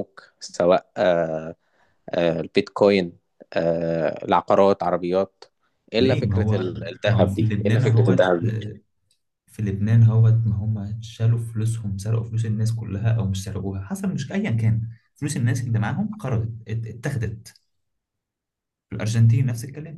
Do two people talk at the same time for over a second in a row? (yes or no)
yes